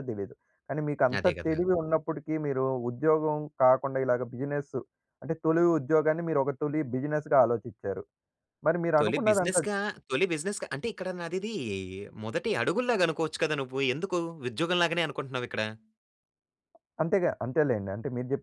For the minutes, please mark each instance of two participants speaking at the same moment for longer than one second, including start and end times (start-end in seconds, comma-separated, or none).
none